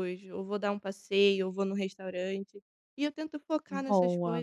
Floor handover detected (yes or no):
no